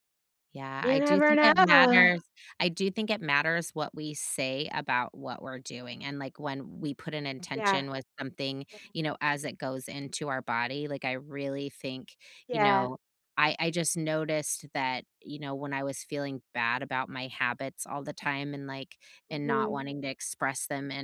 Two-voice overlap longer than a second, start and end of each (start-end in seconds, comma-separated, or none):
0.8-2.1